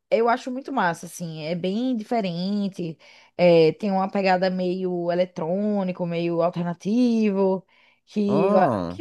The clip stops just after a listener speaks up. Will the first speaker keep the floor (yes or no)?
yes